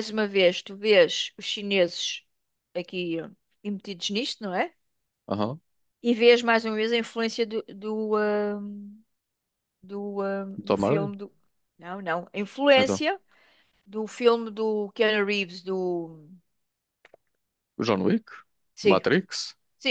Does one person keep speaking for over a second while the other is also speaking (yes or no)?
no